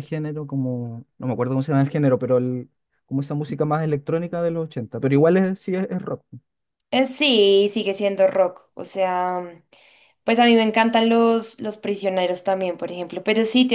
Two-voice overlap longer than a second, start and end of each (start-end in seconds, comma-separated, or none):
none